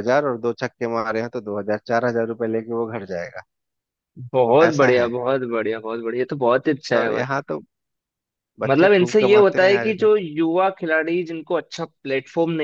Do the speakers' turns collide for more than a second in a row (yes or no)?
yes